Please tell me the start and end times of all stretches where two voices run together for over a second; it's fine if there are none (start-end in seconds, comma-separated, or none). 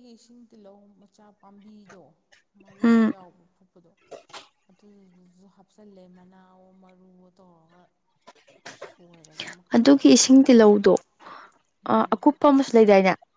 none